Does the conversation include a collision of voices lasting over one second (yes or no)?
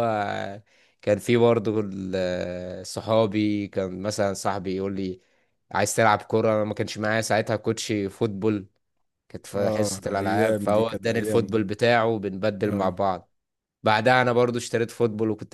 yes